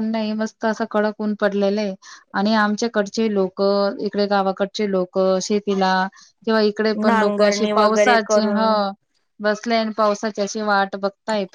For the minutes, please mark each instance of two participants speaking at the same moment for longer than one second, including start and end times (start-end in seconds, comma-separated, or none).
7.0-8.8